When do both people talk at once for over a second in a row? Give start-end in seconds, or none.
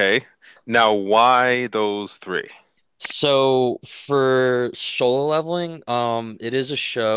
none